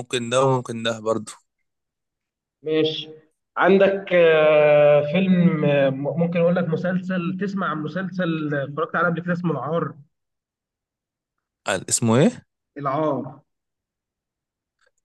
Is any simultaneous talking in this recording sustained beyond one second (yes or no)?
no